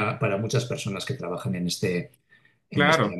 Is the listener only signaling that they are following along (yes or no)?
no